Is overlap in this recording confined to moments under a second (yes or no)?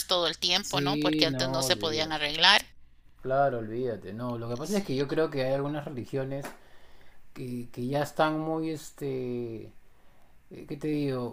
no